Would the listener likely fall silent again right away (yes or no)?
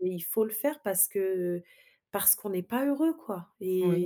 no